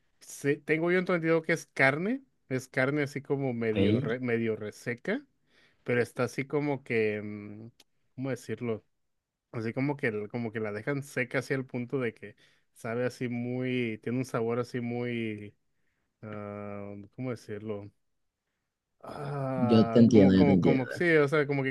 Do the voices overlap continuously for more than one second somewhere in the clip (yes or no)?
yes